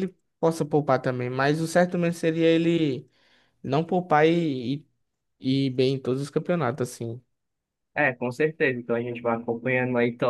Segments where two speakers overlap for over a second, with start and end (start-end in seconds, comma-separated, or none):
none